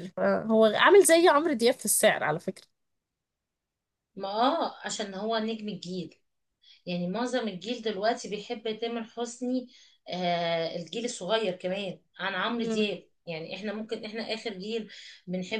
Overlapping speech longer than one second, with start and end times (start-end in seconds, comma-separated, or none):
none